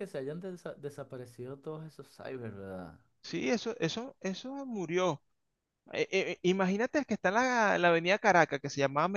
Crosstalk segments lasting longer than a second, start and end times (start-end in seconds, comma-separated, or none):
none